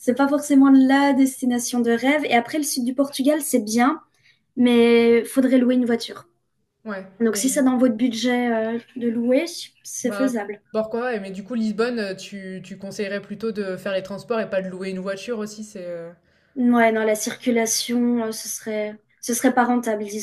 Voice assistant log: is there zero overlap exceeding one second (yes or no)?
yes